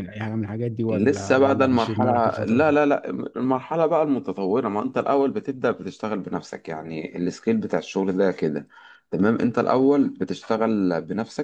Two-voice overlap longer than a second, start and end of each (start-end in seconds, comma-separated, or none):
0.9-2.7